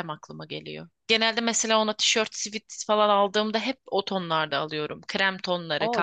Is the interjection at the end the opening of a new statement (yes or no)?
yes